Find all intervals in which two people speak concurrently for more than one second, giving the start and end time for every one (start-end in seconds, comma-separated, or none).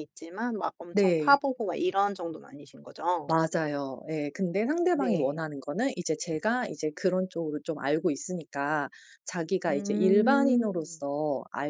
9.7-11.0